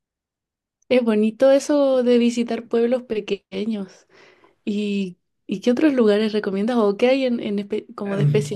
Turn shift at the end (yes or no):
yes